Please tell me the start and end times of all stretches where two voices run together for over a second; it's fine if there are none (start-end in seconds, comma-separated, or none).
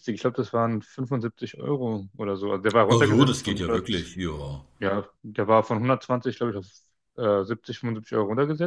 2.9-4.2